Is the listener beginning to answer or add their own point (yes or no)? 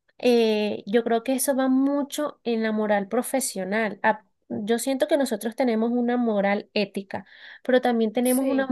no